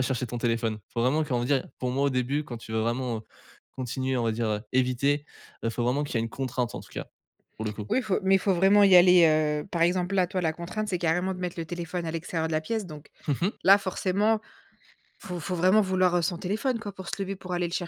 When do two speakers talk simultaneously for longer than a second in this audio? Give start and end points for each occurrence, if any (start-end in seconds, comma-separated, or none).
none